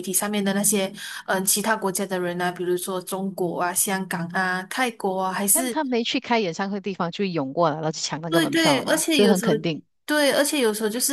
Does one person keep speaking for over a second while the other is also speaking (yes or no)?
yes